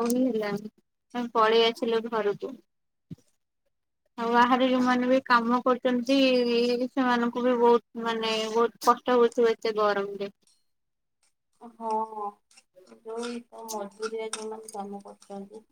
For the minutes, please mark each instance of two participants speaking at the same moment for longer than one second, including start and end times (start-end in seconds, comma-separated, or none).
none